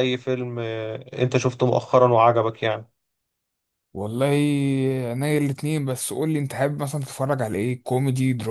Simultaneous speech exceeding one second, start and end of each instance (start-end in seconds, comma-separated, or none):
none